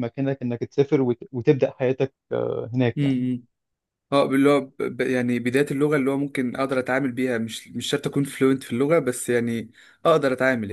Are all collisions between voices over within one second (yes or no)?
yes